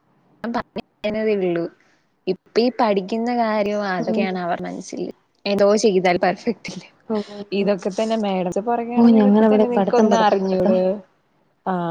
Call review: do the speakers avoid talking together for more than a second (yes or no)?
no